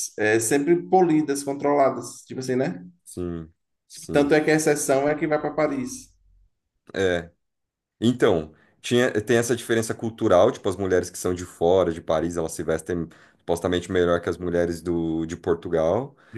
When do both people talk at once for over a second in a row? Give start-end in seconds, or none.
none